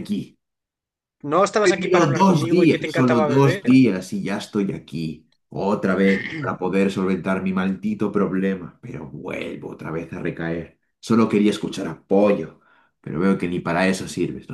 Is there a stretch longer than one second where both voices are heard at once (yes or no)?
yes